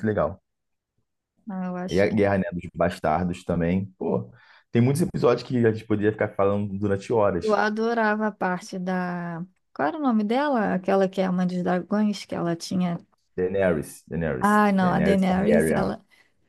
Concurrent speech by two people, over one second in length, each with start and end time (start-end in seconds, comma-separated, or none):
14.4-15.9